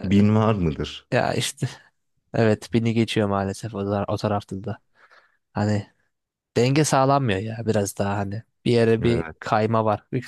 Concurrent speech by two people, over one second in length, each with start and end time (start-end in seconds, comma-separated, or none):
none